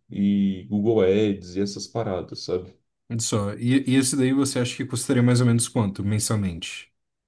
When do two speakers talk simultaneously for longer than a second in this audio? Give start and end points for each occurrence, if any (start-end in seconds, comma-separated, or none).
none